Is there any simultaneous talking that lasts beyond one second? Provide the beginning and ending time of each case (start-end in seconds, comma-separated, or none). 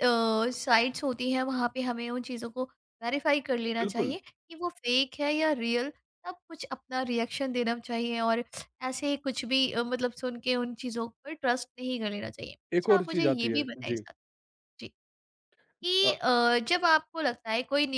12.7-14.0